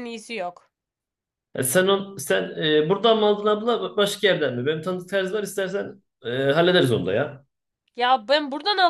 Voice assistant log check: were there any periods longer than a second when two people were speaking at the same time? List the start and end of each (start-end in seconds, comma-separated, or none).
none